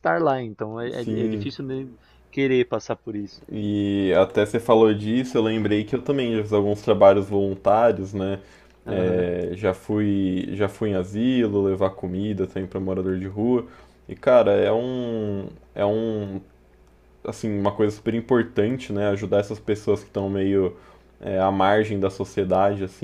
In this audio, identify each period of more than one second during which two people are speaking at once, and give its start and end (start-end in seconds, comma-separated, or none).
none